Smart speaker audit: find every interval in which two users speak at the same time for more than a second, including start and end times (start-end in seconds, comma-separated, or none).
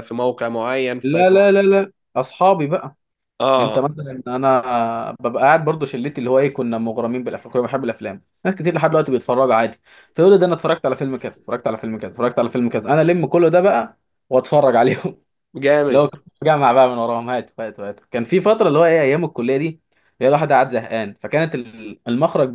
none